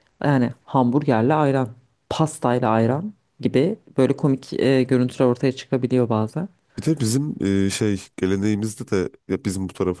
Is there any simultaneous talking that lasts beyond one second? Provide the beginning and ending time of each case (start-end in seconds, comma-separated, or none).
none